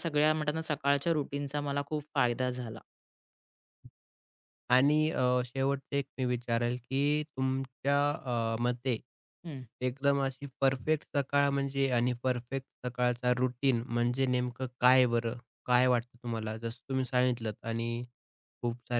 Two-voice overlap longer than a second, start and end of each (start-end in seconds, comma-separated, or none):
none